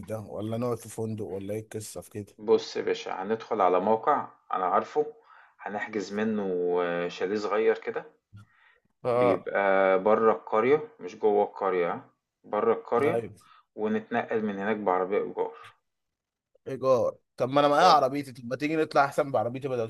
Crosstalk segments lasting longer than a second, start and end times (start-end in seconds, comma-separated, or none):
none